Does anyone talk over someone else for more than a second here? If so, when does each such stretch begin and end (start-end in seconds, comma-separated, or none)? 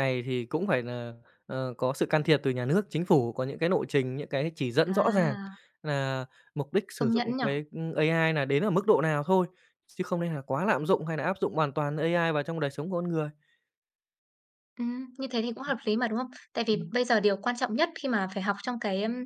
none